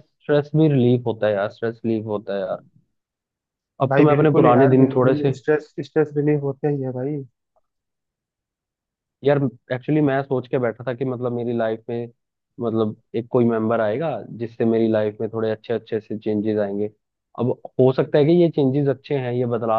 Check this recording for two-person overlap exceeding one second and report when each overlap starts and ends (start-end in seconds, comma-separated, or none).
3.9-5.3